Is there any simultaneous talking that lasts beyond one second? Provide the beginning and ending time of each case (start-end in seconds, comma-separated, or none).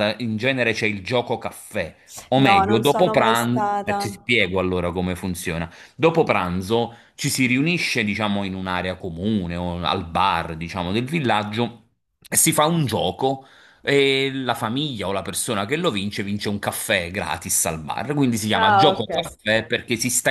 2.4-4.1